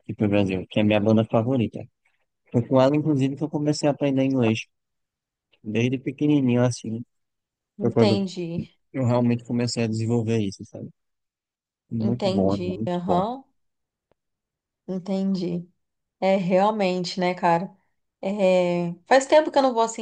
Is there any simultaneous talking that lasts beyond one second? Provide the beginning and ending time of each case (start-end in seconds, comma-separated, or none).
12.0-13.3